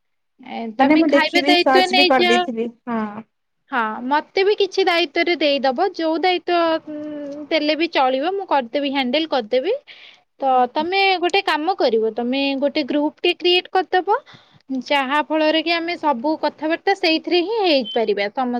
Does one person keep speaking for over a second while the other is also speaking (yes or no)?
yes